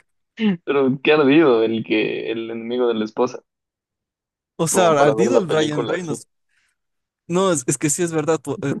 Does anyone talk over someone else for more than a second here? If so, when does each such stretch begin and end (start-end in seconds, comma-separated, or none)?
4.7-6.2